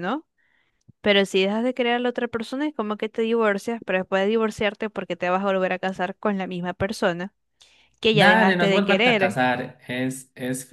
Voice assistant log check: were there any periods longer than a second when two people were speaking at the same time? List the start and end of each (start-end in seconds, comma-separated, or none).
8.1-9.4